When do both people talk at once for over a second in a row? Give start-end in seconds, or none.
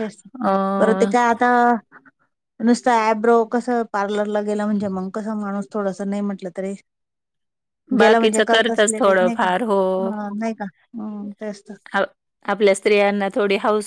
8.0-10.1